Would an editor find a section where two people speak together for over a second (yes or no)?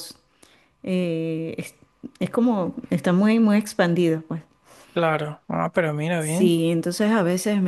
no